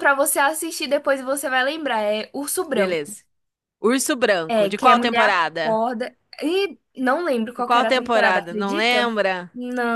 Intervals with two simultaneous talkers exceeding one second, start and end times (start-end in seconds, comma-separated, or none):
4.5-5.8, 7.5-9.2